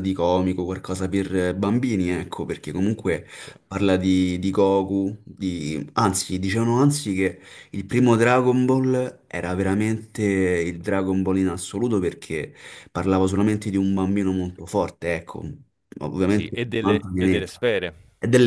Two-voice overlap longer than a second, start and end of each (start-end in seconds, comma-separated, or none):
16.3-17.7